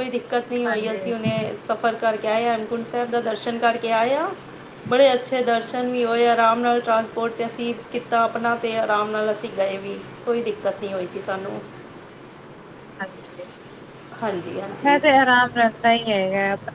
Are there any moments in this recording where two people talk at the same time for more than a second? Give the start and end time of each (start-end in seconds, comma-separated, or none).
none